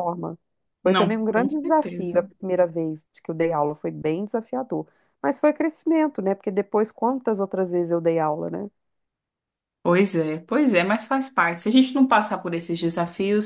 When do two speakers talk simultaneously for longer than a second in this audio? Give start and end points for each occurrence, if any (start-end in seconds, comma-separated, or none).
0.8-2.3